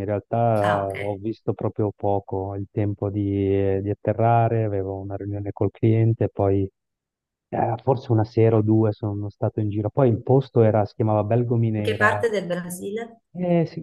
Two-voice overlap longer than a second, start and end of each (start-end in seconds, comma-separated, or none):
none